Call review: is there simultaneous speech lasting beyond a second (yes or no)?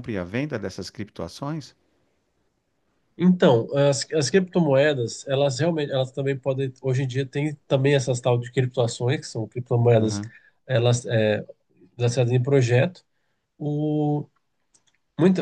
no